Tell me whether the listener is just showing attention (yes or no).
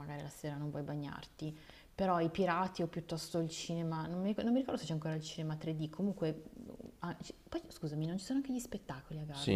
no